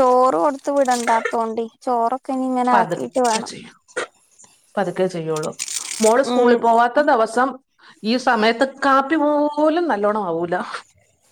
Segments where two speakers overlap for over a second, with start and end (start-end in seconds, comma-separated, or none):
none